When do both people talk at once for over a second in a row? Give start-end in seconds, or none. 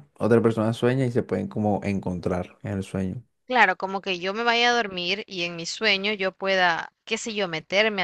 none